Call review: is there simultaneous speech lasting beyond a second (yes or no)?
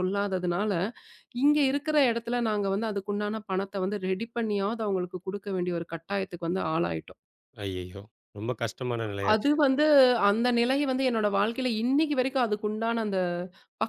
no